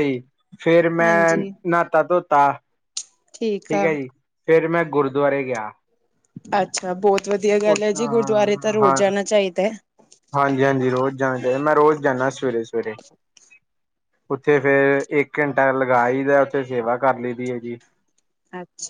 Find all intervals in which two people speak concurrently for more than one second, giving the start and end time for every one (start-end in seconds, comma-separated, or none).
none